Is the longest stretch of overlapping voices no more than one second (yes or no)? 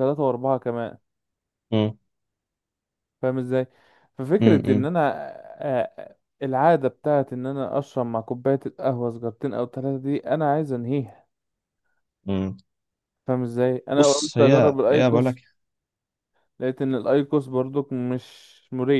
no